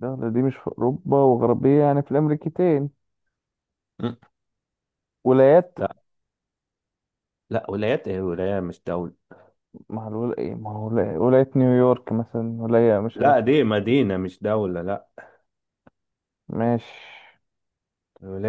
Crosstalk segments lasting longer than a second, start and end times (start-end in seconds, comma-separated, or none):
none